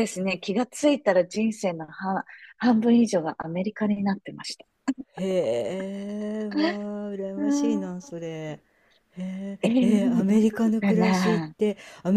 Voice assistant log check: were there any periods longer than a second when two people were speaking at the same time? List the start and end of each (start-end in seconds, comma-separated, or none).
9.6-11.5